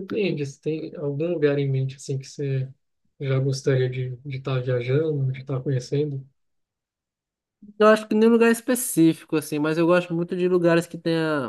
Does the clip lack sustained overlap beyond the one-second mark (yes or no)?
yes